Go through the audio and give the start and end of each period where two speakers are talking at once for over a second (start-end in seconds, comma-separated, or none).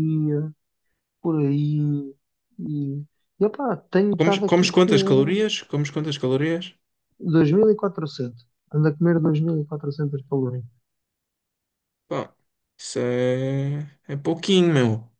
4.2-5.4